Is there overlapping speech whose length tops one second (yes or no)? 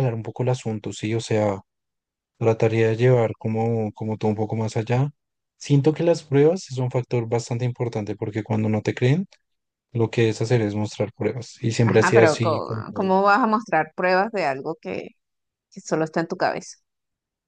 yes